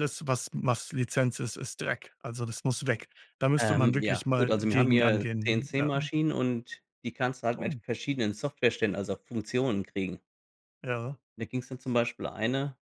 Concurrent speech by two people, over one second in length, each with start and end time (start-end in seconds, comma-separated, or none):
3.6-5.9